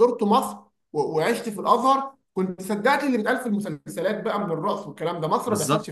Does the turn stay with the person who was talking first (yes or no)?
no